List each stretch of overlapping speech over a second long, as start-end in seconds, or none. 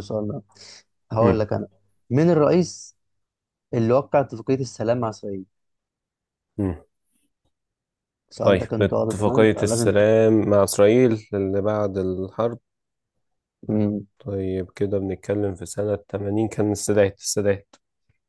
8.4-10.1